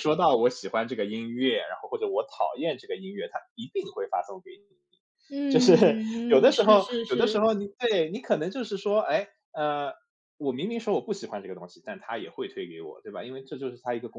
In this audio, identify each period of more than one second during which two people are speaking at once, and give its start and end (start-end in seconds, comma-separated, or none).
5.5-7.4